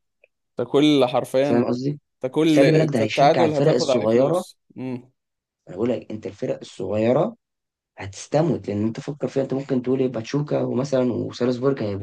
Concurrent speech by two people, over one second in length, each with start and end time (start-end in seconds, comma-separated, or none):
2.5-4.4